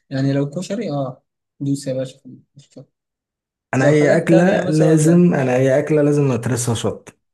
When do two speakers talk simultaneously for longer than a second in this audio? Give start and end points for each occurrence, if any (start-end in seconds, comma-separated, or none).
3.8-5.2